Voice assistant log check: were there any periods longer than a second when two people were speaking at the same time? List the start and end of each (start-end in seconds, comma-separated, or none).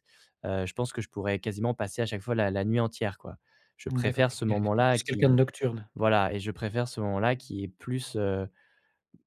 3.9-5.4